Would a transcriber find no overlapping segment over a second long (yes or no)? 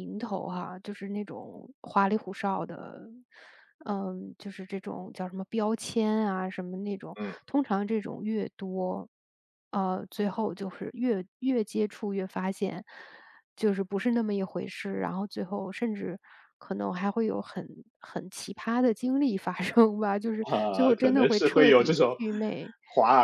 no